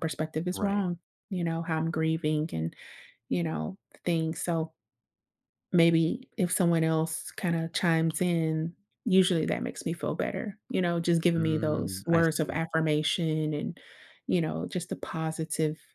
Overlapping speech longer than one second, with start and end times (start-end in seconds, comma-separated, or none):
11.4-12.6